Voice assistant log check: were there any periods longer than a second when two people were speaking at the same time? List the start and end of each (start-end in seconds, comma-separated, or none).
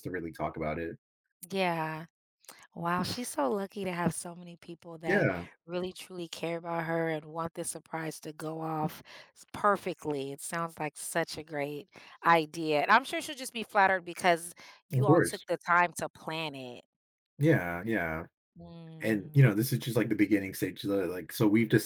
none